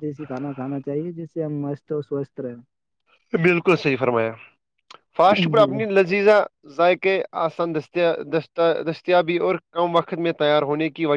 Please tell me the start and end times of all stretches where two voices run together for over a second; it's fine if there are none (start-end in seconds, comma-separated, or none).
none